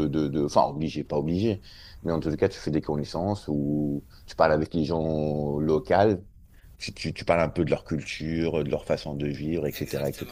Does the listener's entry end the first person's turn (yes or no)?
yes